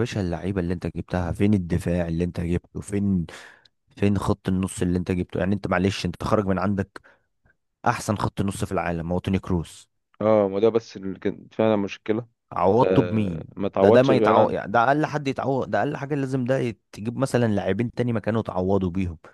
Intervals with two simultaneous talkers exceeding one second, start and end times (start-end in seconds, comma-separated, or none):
12.8-14.6